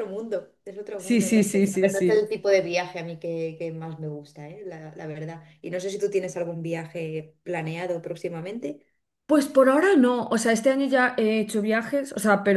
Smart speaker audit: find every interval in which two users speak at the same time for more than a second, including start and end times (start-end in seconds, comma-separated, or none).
1.0-2.3